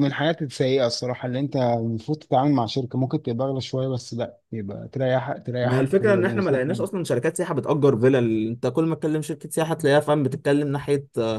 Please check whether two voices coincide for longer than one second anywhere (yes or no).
yes